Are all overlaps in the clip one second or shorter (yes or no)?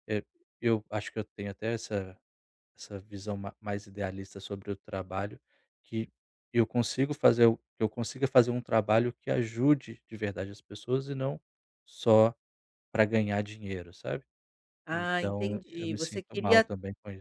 no